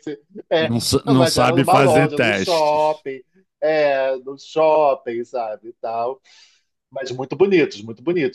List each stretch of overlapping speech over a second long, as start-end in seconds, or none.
0.6-3.0